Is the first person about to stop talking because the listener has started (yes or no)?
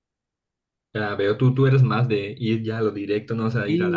yes